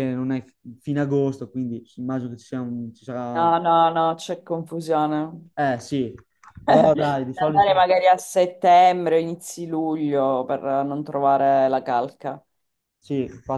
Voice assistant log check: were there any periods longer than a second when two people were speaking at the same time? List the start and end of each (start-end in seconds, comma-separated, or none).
6.7-7.9